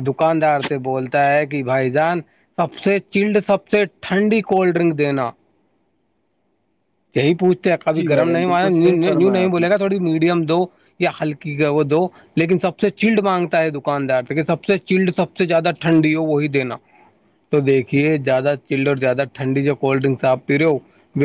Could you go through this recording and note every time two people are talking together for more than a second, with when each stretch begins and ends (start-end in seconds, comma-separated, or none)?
8.0-9.7